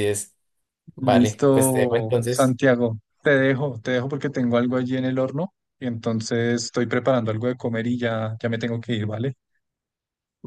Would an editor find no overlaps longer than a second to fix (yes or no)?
no